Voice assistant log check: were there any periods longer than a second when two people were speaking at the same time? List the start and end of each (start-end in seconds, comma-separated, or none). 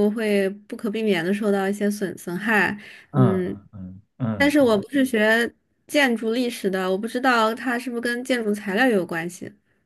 none